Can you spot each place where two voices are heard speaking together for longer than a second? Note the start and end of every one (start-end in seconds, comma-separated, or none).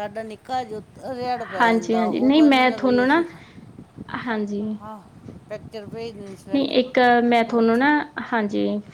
1.6-3.2